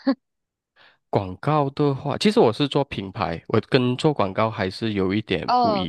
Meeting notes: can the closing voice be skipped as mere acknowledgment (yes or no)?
no